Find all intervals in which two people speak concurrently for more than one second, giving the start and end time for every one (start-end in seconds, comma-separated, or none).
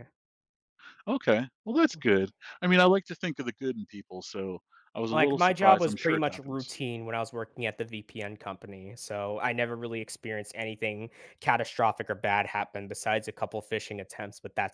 5.1-6.7